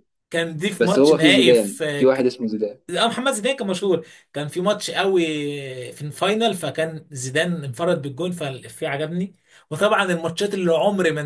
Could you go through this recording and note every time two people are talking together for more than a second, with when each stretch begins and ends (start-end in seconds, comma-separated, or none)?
0.8-2.3